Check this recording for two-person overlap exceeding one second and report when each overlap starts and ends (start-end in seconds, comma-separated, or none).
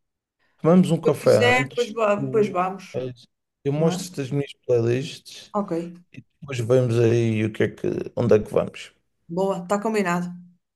1.0-2.5